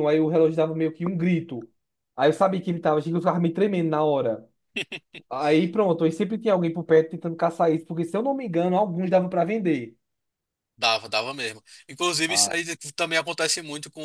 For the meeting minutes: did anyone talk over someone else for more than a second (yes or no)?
no